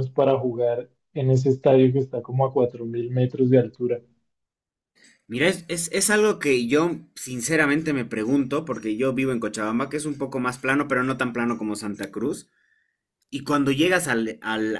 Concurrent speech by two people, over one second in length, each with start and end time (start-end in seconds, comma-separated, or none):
none